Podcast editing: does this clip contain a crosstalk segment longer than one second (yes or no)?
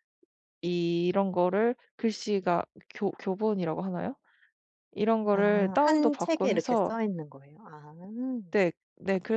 yes